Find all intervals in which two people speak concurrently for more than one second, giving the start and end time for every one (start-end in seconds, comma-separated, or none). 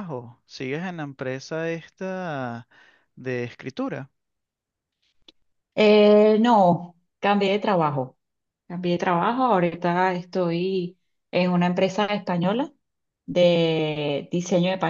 none